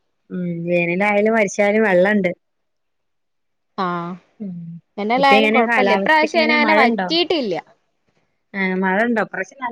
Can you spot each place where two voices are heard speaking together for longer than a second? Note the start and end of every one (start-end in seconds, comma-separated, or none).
5.2-7.1